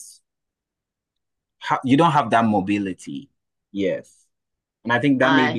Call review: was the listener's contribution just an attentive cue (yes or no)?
yes